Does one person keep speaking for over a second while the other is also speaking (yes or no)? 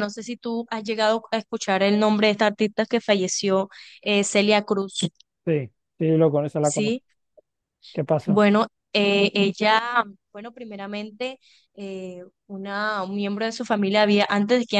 no